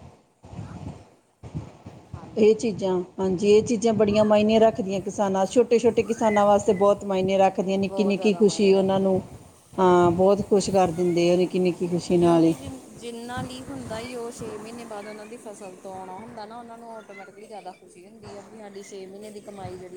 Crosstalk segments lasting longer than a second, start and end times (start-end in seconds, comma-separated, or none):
7.8-9.1